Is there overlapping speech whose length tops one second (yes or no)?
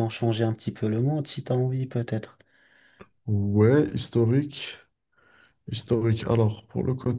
no